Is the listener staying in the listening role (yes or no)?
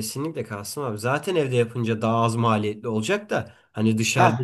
yes